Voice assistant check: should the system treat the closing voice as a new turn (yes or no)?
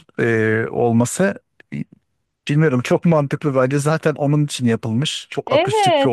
yes